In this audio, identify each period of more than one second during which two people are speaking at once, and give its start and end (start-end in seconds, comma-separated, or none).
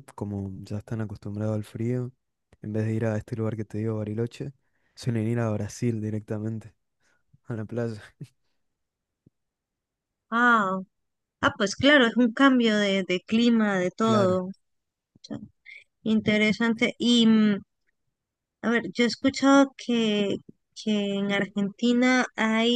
none